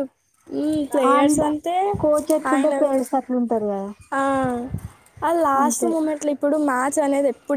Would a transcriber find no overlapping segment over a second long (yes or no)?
yes